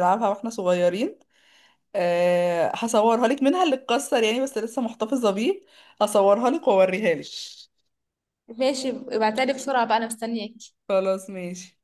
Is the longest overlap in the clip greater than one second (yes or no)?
no